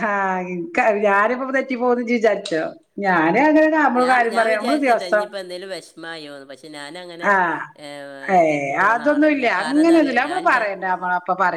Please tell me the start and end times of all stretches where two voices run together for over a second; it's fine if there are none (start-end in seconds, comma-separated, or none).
8.5-10.6